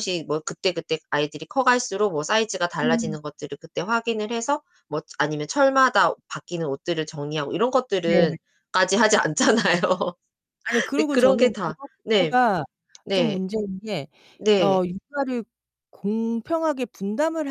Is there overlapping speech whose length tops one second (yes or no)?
yes